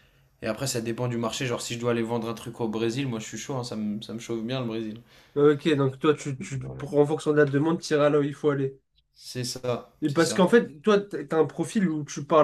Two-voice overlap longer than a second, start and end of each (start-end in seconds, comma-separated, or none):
none